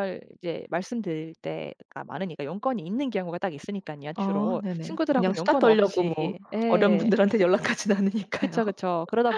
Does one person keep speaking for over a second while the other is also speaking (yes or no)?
yes